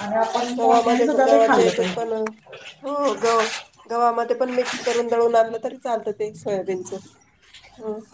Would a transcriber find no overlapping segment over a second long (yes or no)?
no